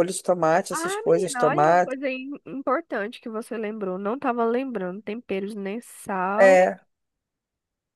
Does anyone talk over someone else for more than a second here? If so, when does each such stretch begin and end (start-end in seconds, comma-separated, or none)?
0.7-1.9